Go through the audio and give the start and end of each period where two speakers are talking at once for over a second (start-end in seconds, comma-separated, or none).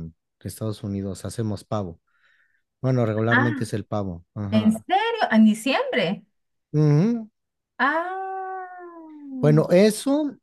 none